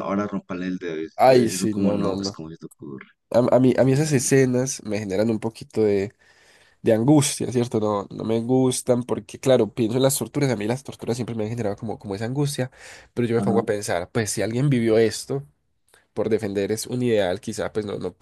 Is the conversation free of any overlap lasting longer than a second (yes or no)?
no